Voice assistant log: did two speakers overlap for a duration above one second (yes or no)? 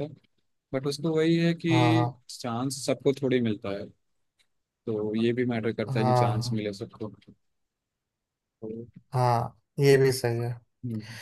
no